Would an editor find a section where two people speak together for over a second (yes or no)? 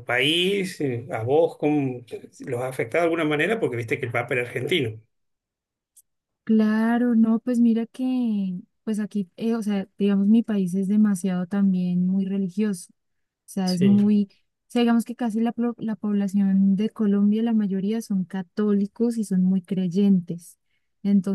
no